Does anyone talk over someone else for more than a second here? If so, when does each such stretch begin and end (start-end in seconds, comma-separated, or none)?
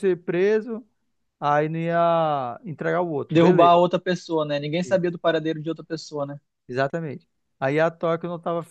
none